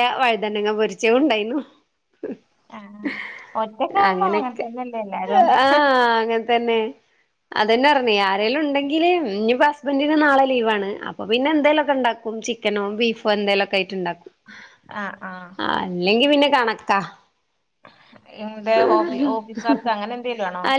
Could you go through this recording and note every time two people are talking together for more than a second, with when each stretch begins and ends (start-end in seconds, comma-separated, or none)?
none